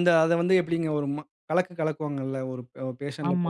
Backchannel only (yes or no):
no